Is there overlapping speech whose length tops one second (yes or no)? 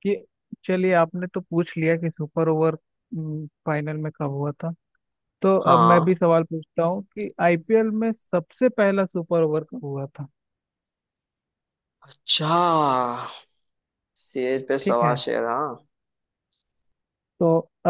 no